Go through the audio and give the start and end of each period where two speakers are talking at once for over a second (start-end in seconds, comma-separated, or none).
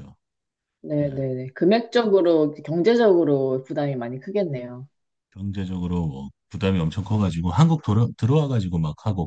none